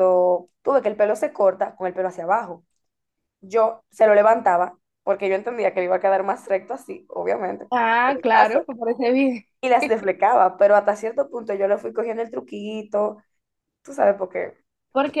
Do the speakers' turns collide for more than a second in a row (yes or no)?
no